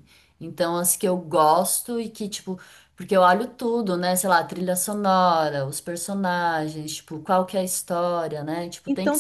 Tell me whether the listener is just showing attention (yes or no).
no